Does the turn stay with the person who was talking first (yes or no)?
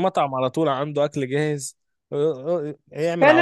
no